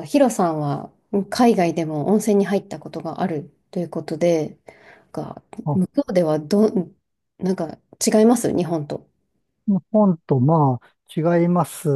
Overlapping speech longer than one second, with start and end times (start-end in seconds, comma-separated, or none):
none